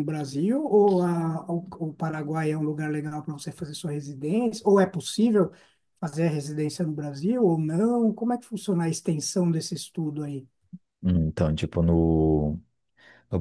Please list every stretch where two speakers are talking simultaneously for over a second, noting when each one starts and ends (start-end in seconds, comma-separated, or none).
none